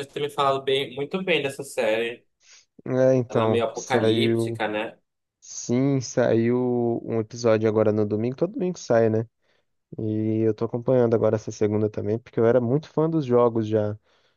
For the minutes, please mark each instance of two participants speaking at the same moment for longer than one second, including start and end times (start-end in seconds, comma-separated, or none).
3.3-4.6